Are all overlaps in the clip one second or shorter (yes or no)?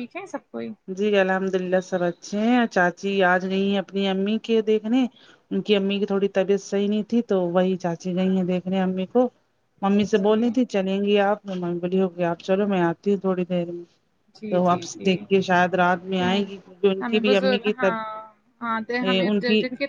yes